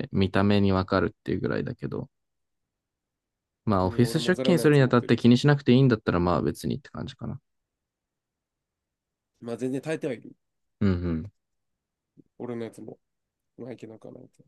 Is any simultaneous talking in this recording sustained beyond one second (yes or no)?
yes